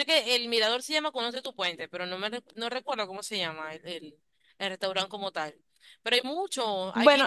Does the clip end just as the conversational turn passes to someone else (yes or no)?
no